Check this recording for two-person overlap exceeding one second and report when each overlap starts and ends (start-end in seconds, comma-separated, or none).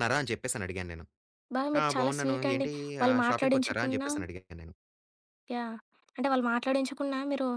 1.8-4.1